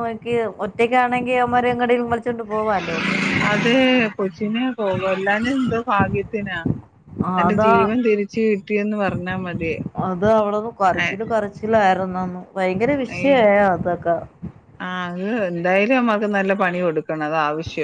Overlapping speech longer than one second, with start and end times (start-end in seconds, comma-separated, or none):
none